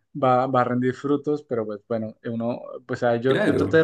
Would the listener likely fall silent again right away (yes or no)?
yes